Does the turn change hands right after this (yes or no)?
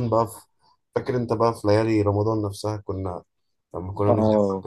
no